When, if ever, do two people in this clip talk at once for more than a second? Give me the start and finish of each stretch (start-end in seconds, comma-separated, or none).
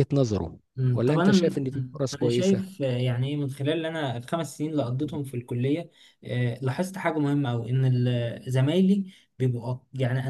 0.8-2.8